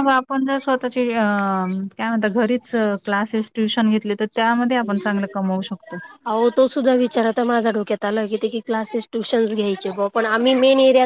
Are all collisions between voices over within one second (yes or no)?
yes